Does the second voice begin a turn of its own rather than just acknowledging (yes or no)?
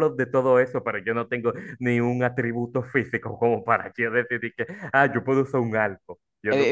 yes